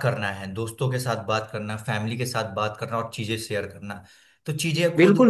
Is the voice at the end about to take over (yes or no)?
yes